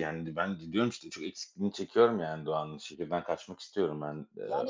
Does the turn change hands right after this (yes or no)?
yes